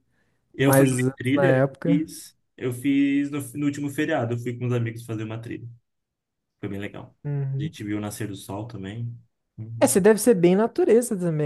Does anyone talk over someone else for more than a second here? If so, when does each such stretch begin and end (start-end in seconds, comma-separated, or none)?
0.6-2.1